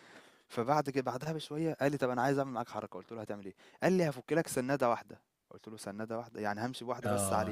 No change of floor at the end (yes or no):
no